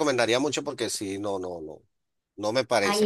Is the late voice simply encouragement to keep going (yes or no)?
no